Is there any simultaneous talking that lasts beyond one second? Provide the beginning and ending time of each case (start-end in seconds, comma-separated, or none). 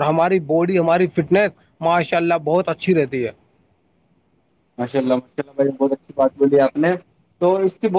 none